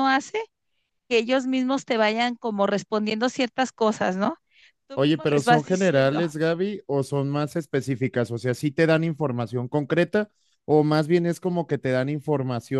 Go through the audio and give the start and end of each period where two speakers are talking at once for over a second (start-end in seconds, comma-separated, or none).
5.0-6.2